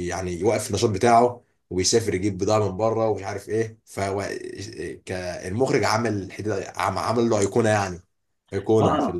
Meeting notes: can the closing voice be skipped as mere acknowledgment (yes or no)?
no